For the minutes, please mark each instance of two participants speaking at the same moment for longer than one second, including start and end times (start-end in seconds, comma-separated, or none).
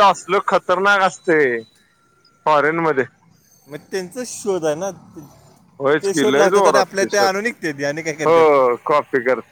6.0-7.5